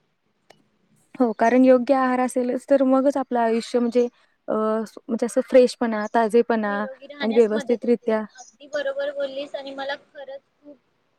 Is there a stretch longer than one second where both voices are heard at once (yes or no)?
no